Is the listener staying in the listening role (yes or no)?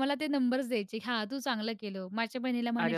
yes